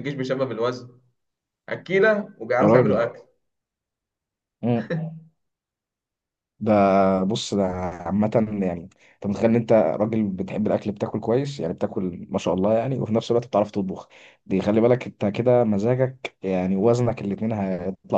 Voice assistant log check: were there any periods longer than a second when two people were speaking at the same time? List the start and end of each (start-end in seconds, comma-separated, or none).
none